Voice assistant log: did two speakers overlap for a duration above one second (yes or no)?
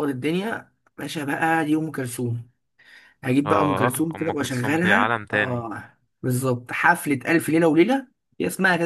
yes